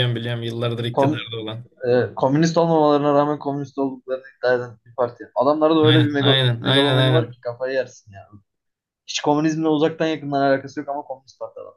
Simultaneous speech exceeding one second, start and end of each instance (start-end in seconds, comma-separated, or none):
5.8-7.4